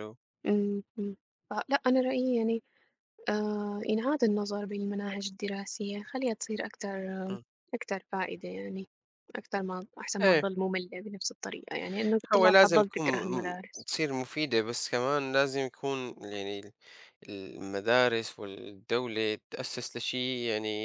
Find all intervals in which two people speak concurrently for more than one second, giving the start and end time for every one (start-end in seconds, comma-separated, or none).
12.3-13.9